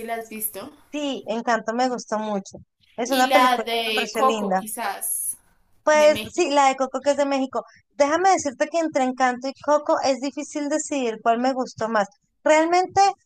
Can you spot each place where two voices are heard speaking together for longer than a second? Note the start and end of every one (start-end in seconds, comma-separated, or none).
3.1-4.7